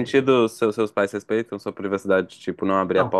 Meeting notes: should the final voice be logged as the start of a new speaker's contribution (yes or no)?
yes